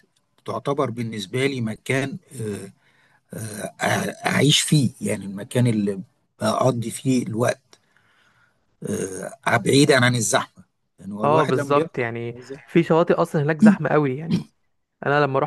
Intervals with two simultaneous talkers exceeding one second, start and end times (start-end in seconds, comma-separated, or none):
11.2-12.8